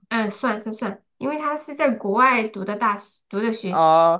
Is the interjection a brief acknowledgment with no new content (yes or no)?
no